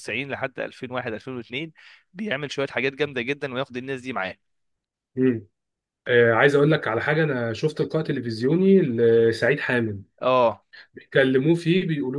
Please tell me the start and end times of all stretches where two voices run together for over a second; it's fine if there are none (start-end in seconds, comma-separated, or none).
none